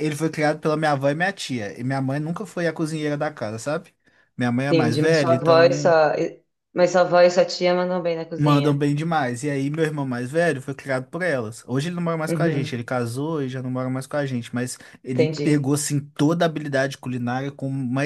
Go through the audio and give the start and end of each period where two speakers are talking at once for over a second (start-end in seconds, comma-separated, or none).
4.7-5.9